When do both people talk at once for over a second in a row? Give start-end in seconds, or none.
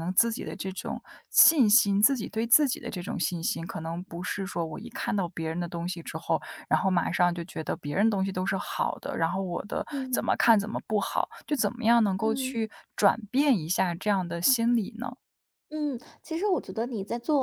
none